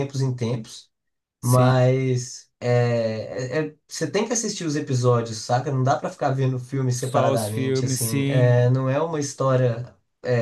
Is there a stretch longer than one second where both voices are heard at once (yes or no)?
yes